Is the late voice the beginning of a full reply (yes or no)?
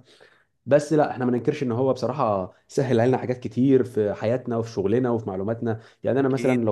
no